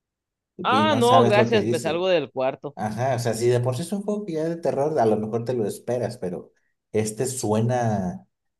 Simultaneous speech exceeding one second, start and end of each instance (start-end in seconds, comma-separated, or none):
0.6-2.0